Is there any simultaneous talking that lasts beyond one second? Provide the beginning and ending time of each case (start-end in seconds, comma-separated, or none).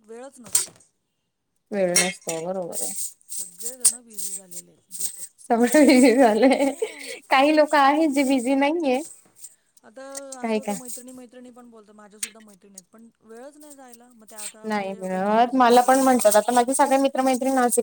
14.7-16.5